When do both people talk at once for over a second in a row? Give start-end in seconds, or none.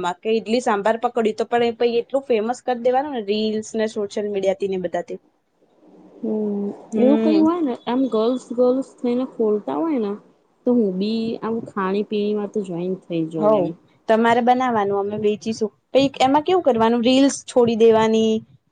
none